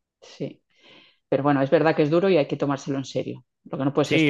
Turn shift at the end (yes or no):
yes